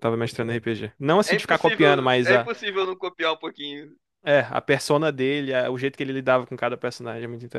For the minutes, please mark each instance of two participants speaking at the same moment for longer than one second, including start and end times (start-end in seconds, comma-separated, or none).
1.3-2.5